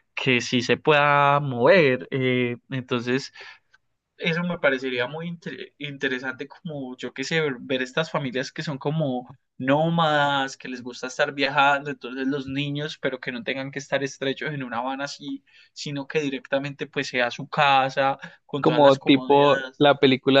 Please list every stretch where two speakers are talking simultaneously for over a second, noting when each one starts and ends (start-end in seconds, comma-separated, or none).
18.6-19.9